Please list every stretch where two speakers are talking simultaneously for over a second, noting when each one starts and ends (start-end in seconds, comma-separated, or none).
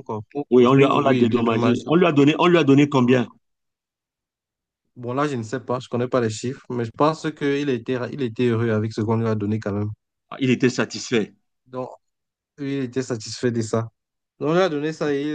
0.5-1.8